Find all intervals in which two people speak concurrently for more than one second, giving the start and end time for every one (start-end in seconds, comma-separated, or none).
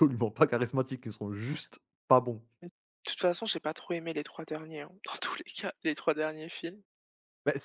none